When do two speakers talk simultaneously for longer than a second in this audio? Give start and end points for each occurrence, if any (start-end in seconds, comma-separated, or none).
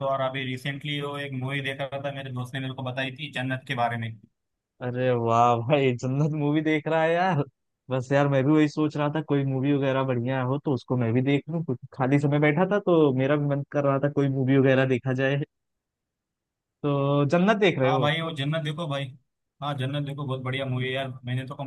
none